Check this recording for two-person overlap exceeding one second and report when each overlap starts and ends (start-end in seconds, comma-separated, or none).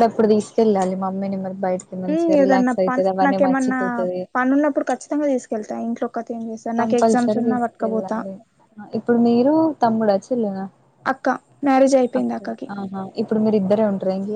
2.1-3.8, 6.8-8.2